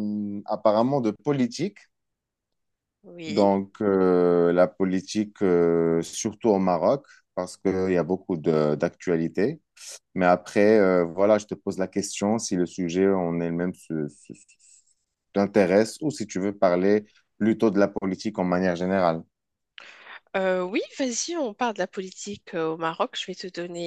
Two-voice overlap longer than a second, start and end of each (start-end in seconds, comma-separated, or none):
none